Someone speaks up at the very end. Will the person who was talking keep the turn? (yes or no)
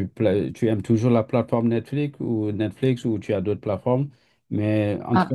yes